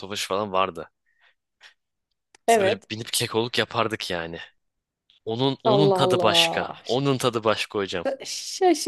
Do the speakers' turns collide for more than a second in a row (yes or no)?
yes